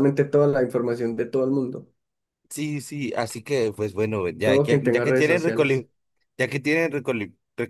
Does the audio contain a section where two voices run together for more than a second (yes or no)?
yes